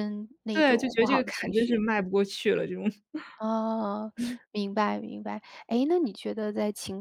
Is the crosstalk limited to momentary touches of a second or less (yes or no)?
no